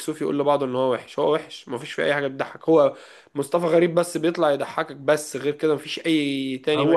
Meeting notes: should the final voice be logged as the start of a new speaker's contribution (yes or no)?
yes